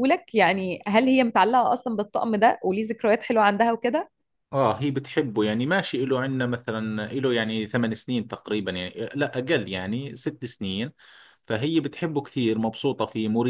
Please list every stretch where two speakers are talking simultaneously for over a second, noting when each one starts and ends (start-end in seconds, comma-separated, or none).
none